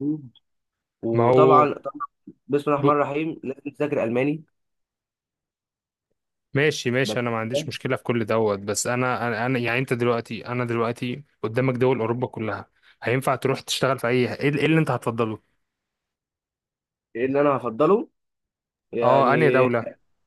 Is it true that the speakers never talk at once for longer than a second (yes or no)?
yes